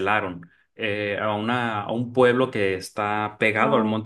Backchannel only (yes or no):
yes